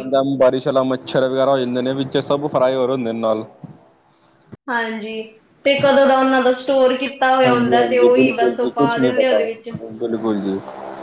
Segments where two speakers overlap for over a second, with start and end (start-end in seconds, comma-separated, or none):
7.5-9.4